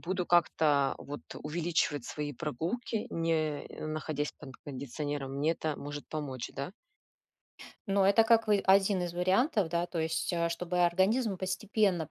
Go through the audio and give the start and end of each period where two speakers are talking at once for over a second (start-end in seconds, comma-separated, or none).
none